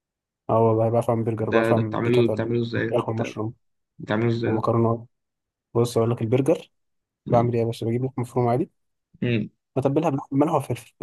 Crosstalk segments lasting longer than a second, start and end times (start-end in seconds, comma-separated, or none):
1.4-3.4